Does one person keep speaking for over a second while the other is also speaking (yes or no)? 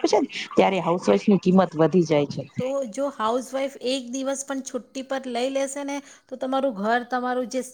no